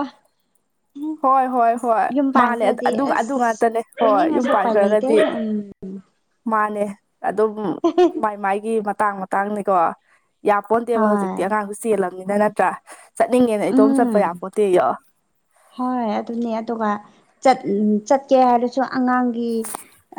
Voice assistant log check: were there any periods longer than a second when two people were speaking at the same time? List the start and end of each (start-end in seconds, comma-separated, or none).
2.2-5.2